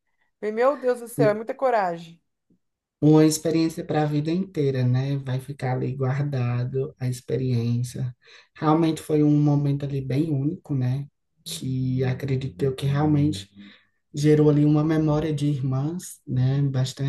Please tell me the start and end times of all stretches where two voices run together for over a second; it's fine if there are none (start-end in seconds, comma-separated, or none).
none